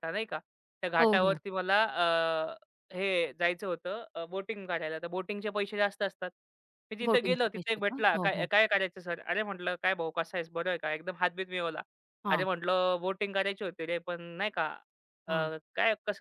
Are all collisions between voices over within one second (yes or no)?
no